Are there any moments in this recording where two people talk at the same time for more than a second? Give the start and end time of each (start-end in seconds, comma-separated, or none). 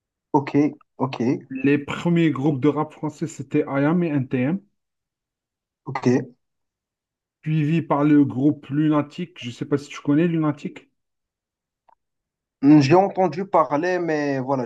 none